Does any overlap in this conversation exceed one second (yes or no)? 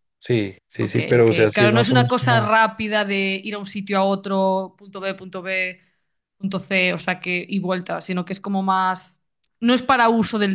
yes